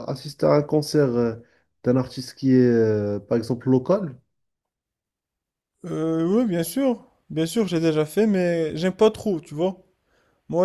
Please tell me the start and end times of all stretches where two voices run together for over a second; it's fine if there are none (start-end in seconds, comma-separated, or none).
none